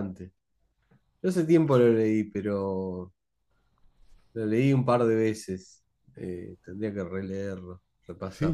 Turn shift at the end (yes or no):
yes